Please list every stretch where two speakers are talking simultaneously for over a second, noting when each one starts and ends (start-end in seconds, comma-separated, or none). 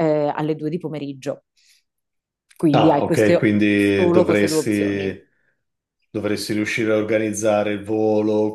2.7-5.2